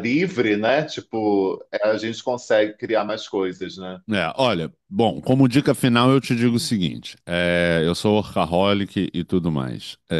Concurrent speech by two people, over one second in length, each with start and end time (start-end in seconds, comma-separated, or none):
none